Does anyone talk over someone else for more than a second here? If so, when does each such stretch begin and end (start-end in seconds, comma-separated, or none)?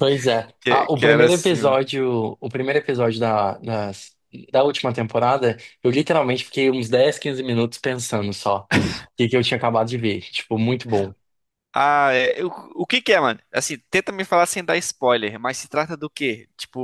0.6-1.8